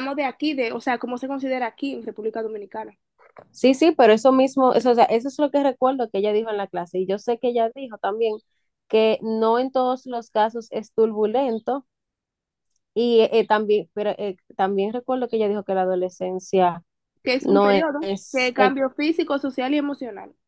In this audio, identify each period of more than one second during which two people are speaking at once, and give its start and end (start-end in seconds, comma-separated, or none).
17.4-18.7